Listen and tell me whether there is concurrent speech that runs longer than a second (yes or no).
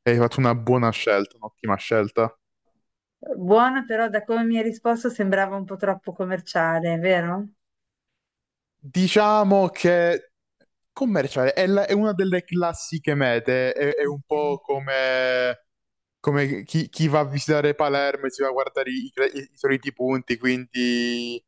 no